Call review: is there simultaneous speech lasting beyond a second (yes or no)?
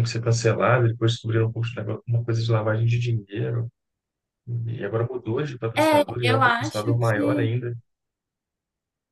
yes